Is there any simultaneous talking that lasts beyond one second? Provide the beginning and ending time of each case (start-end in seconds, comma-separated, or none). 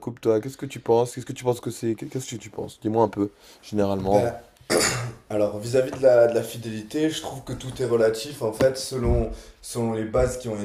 none